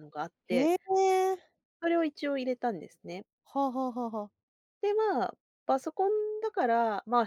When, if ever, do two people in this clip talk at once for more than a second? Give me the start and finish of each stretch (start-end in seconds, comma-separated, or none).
none